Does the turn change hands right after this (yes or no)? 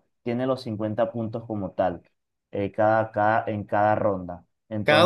yes